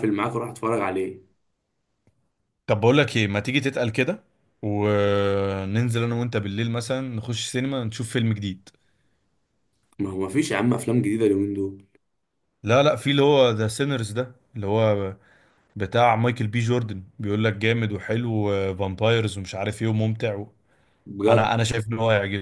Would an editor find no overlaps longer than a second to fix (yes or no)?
yes